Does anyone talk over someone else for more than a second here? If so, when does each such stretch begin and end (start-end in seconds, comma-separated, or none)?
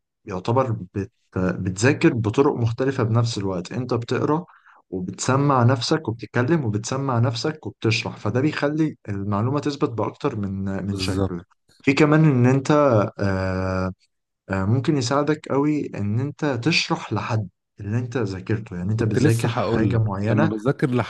18.9-20.5